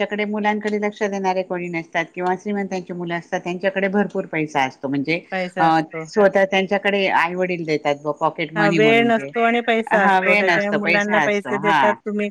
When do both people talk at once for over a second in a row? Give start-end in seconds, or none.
8.6-11.8